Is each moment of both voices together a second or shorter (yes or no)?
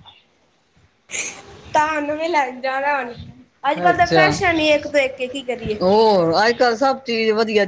yes